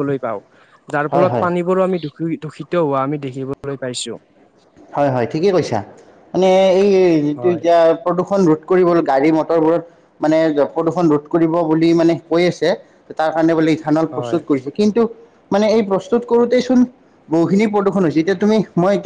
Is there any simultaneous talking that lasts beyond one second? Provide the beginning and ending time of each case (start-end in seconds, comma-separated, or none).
none